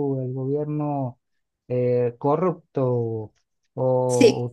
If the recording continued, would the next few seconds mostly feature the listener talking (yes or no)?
no